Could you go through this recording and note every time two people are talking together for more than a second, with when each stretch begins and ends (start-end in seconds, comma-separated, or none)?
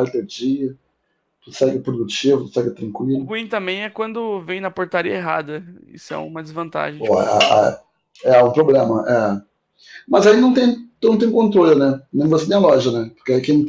none